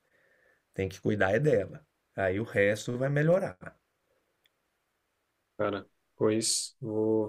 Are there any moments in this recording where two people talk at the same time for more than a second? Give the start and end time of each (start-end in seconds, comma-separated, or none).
none